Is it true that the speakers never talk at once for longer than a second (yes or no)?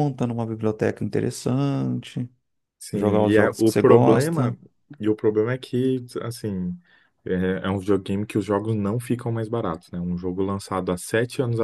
no